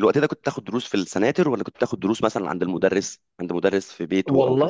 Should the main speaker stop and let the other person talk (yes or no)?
yes